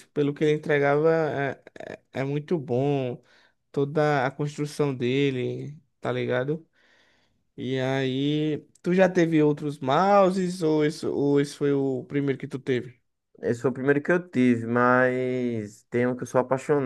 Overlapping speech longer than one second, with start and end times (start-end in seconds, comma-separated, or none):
none